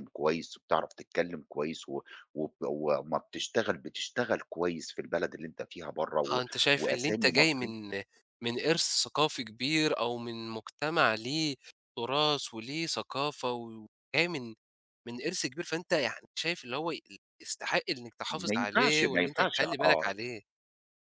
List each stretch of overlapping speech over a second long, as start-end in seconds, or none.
6.3-7.7, 18.3-20.1